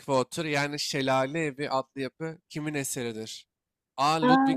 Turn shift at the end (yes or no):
no